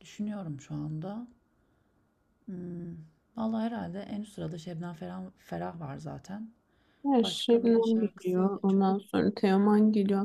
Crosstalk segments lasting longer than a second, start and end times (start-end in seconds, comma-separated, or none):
7.2-8.9